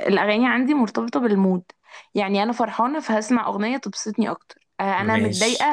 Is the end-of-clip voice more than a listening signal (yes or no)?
no